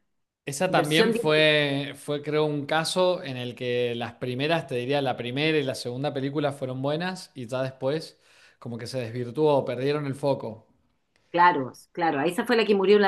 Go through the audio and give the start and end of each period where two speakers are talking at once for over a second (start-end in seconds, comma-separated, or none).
none